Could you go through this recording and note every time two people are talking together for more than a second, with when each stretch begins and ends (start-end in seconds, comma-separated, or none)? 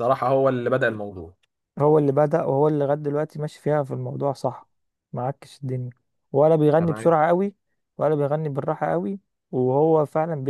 none